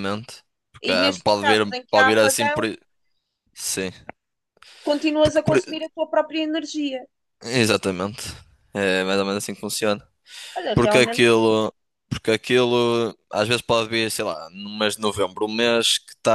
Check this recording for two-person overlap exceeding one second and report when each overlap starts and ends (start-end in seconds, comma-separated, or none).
0.9-2.6